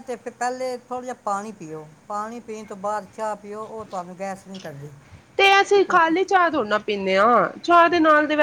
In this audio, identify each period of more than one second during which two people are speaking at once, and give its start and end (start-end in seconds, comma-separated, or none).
none